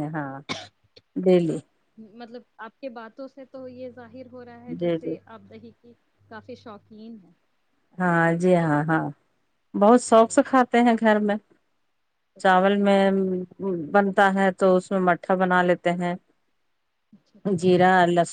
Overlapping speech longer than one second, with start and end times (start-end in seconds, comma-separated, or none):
none